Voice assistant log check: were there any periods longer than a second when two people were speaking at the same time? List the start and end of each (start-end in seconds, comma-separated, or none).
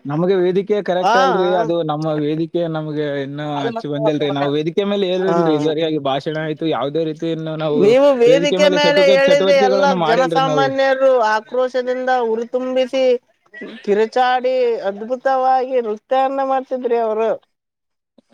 8.9-10.7